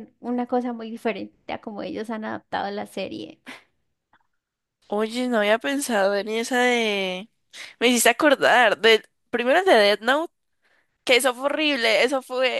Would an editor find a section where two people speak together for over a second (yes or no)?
no